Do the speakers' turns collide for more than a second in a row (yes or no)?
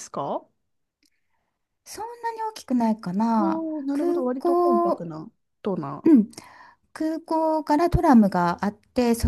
yes